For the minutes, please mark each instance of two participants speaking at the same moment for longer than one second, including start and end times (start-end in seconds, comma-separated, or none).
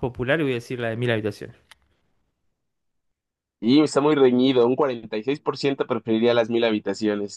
none